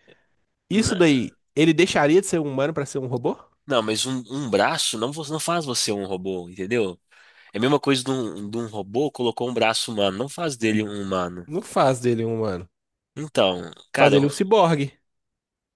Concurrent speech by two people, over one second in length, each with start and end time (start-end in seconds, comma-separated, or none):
none